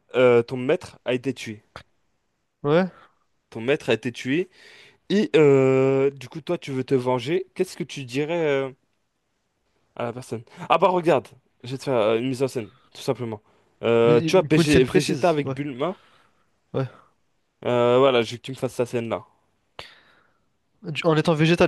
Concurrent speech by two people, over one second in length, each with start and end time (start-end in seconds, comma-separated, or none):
14.0-15.6